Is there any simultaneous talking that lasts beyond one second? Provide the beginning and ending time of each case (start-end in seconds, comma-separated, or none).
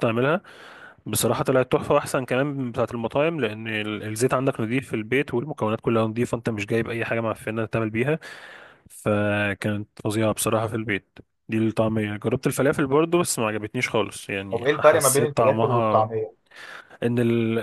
14.5-16.1